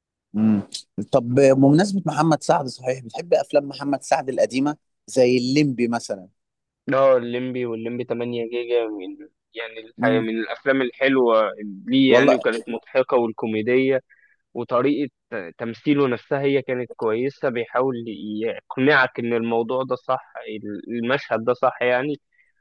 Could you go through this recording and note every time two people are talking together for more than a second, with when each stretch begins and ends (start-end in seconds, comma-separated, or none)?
none